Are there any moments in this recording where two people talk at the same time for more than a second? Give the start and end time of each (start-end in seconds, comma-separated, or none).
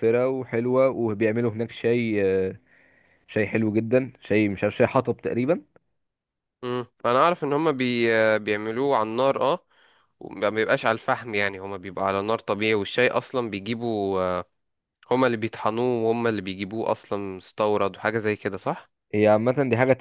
none